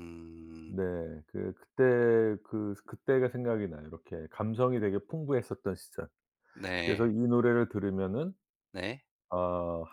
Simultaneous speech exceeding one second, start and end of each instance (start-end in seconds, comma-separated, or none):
none